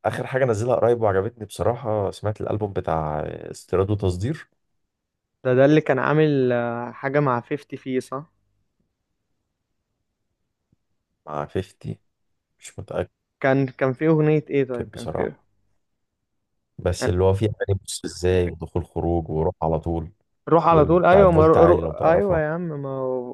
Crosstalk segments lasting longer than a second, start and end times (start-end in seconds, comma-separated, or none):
20.6-22.4